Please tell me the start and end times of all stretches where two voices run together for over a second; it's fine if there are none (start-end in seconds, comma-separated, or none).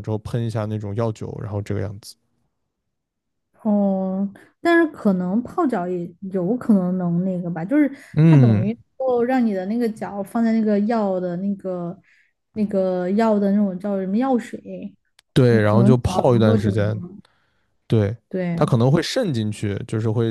15.5-17.0